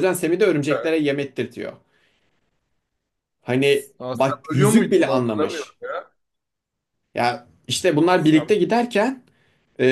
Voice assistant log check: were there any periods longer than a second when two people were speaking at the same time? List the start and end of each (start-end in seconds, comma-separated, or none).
4.0-5.8